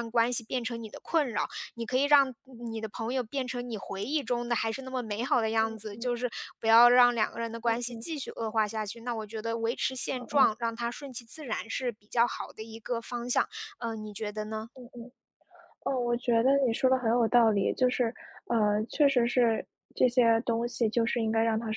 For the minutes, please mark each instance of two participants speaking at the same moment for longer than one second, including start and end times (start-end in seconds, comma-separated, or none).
none